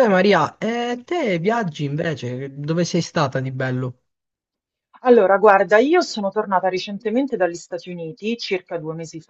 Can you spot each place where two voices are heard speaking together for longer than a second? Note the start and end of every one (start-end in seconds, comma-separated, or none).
none